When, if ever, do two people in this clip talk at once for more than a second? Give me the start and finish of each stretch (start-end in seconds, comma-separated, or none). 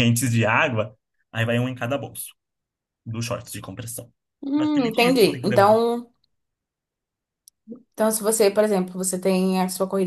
4.5-5.8